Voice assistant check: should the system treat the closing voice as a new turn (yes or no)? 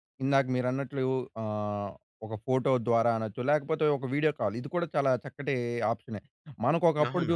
no